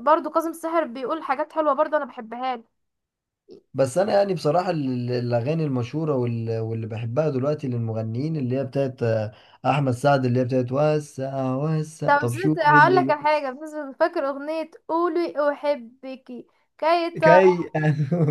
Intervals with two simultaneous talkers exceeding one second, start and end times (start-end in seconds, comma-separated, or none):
12.1-13.3